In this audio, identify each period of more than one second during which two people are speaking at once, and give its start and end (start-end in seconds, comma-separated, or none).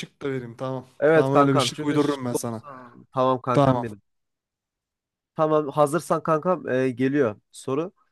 1.0-2.4